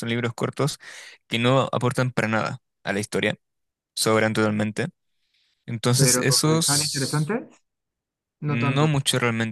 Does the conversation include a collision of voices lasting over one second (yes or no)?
yes